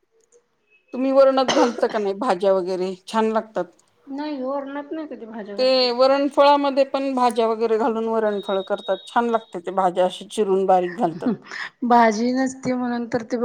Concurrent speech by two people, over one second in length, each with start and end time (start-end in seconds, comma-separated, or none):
none